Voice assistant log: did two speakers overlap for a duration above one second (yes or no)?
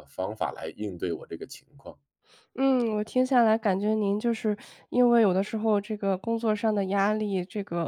no